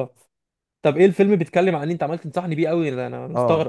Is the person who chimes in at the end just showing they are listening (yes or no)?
no